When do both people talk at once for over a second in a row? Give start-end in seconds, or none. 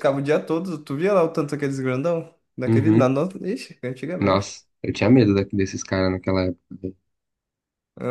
none